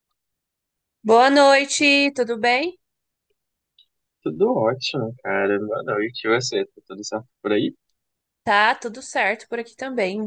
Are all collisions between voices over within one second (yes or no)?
yes